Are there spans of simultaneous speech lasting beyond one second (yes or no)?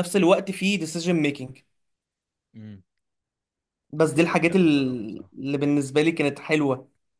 yes